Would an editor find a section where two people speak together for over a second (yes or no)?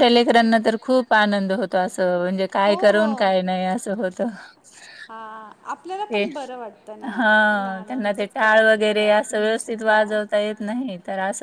yes